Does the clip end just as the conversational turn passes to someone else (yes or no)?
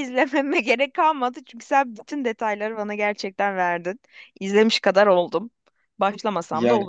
yes